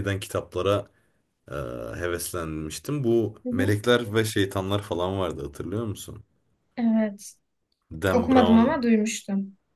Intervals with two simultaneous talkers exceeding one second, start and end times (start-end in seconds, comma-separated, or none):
none